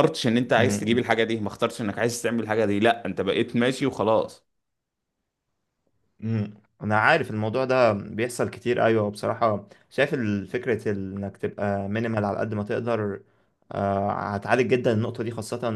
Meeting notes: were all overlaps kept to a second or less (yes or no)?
yes